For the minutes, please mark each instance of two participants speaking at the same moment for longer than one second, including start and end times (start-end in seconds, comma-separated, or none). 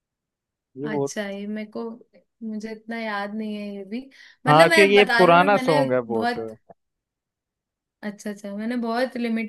4.5-6.4